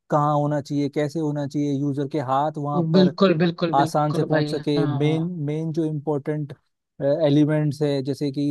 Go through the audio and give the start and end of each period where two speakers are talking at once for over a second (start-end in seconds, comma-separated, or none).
3.7-5.3